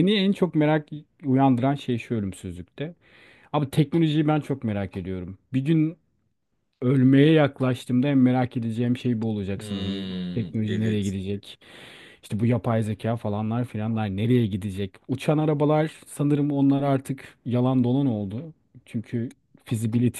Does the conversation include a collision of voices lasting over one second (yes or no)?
yes